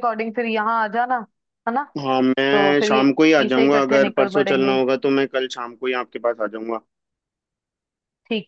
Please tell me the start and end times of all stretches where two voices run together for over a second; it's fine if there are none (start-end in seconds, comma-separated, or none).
2.5-4.7